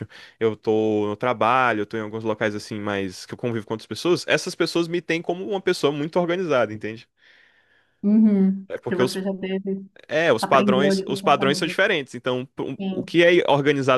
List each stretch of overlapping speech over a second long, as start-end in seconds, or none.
10.4-11.8